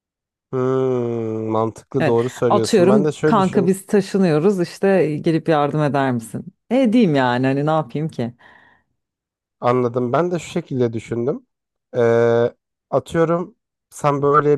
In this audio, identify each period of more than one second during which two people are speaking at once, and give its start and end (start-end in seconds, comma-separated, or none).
2.0-3.7